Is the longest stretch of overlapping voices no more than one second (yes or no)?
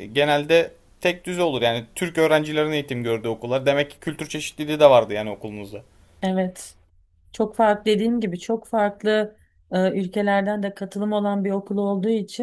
yes